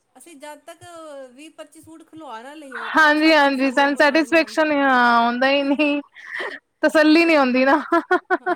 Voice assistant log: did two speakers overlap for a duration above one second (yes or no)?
no